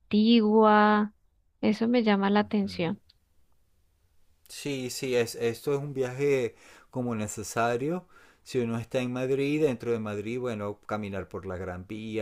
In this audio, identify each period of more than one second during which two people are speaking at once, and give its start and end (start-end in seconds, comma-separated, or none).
none